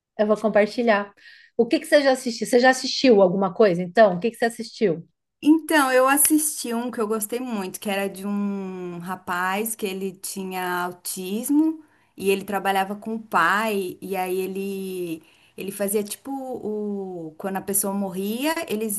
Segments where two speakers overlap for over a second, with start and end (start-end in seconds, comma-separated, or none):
none